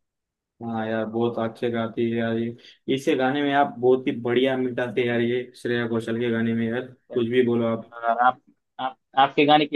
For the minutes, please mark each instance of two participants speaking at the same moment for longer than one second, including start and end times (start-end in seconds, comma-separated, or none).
none